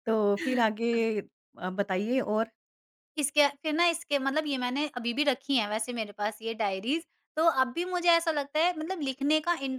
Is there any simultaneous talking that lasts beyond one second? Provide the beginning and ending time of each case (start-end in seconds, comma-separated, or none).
none